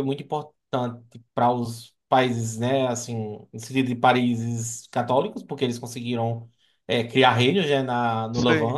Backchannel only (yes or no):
yes